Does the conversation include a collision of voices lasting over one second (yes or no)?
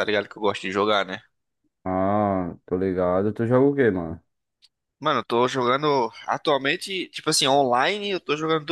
no